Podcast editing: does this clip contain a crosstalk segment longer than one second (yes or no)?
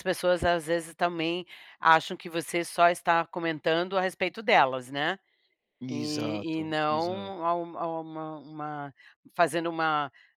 yes